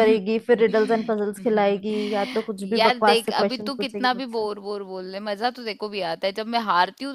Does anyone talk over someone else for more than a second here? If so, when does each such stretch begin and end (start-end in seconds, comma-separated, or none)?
2.8-4.4